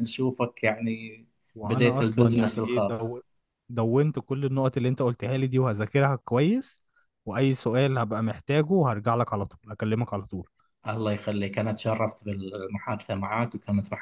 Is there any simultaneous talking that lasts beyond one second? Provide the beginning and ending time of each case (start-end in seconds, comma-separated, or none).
1.6-3.2